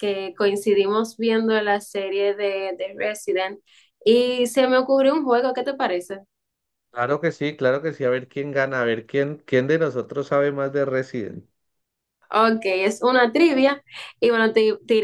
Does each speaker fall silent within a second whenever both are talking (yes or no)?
yes